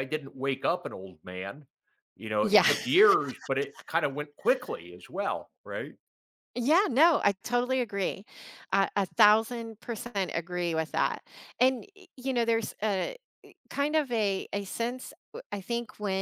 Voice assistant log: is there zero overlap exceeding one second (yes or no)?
yes